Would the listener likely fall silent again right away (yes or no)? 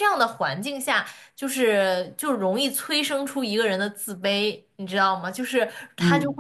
yes